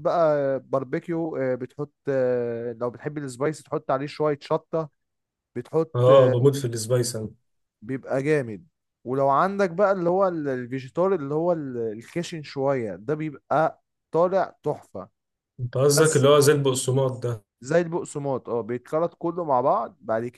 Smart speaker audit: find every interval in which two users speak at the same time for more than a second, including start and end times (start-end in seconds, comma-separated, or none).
none